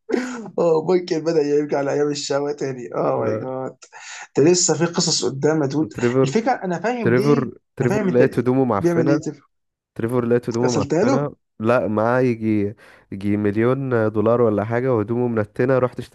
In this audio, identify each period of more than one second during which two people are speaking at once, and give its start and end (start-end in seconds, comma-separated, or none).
7.0-9.2